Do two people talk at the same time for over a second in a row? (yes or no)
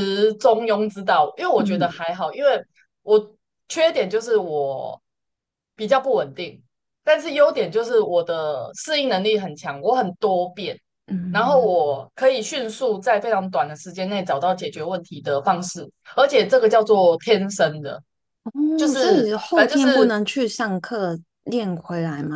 yes